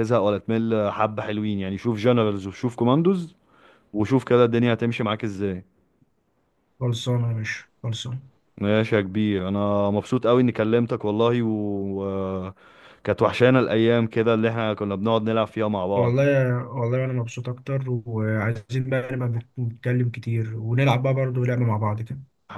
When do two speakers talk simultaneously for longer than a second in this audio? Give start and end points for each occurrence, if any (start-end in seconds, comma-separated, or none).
none